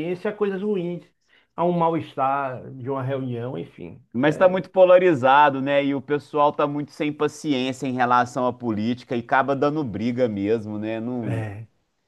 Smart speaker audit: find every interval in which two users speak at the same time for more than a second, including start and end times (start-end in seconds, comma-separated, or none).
none